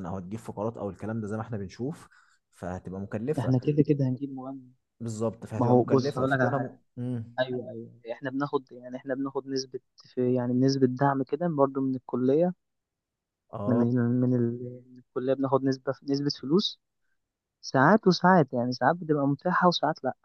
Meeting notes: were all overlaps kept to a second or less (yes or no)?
no